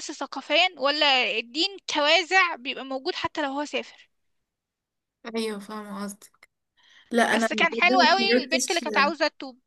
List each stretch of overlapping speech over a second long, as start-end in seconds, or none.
7.3-8.8